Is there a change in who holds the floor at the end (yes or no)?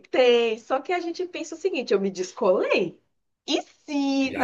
no